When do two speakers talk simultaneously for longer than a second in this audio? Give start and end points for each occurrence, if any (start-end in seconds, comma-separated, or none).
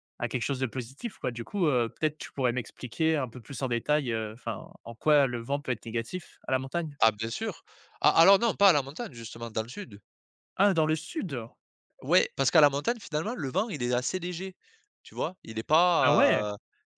none